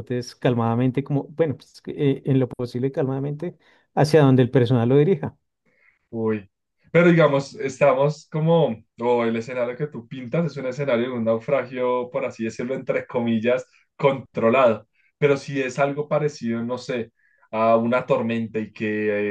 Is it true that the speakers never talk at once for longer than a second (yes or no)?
yes